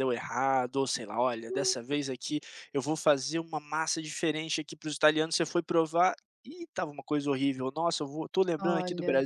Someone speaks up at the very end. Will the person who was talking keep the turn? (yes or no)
yes